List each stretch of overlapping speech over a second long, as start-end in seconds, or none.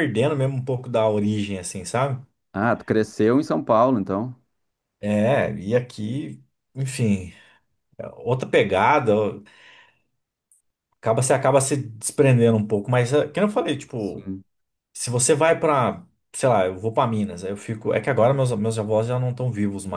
none